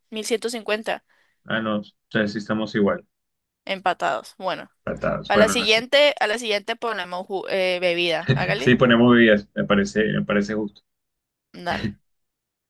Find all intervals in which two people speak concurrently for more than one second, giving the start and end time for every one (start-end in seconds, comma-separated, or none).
none